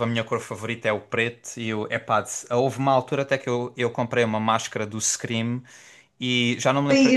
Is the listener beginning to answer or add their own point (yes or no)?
no